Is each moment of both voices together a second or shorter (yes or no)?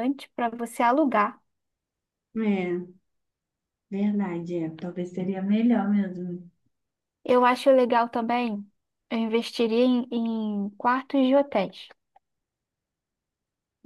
yes